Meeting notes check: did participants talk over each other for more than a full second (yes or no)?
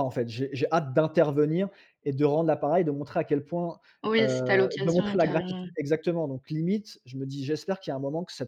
yes